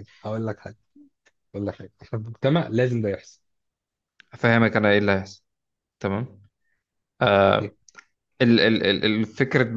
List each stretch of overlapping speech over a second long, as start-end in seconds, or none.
none